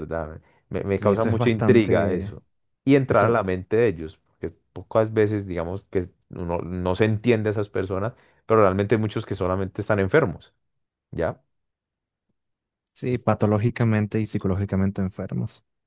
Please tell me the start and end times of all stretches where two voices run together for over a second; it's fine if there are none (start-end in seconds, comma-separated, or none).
0.9-2.4